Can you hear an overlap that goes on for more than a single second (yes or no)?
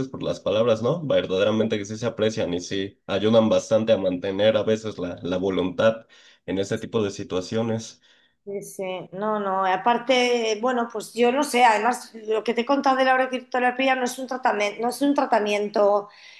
no